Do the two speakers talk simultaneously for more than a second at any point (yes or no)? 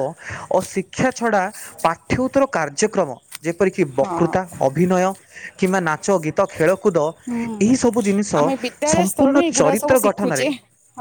yes